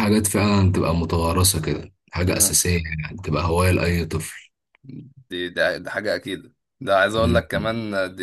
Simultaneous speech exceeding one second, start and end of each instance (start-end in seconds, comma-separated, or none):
none